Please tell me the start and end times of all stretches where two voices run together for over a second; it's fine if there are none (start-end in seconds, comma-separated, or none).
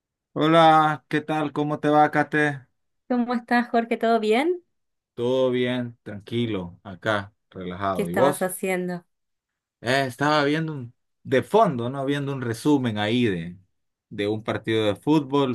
none